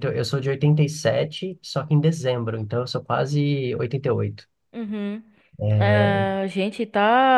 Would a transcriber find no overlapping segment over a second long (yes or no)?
yes